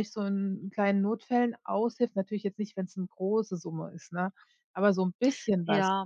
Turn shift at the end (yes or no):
yes